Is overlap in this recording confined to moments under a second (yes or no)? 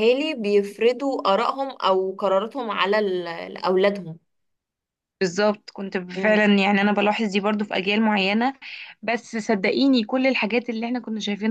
yes